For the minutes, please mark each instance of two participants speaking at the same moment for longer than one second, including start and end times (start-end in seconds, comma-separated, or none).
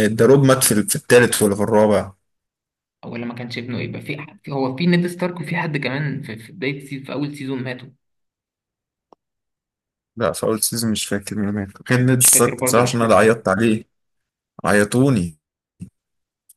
12.2-13.4